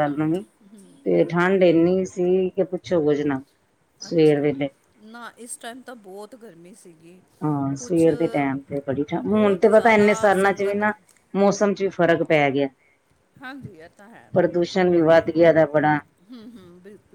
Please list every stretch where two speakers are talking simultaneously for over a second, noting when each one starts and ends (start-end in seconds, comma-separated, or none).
9.1-10.9